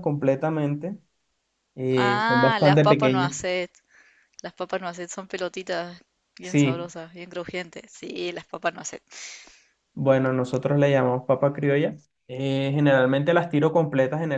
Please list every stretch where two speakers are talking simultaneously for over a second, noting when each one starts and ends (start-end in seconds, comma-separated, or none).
1.9-3.3